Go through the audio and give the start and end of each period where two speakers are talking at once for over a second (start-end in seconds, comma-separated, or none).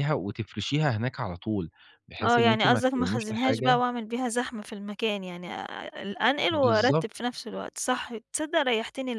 2.2-3.8